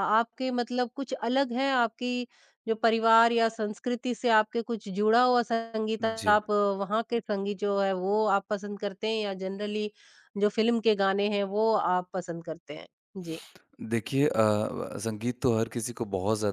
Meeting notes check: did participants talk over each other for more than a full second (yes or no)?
no